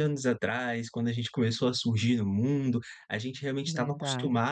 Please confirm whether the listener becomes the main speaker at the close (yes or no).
no